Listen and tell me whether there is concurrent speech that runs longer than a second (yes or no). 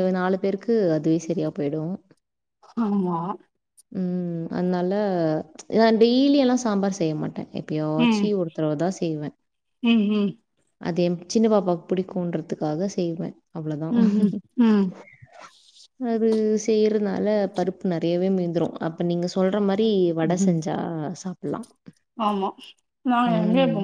no